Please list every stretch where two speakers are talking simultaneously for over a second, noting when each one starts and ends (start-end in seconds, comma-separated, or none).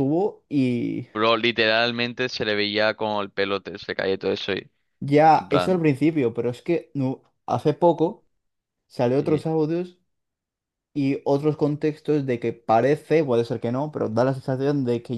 none